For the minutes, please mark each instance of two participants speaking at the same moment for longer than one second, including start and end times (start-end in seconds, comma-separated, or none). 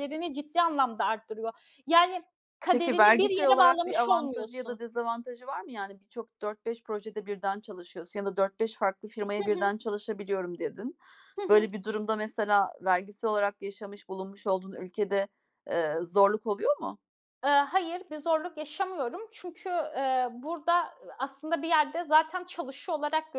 2.7-4.8